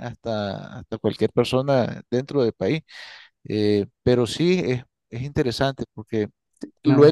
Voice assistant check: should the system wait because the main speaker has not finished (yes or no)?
yes